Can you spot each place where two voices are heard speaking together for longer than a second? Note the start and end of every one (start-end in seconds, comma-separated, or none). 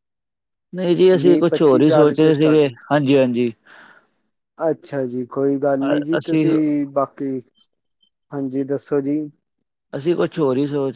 1.2-2.8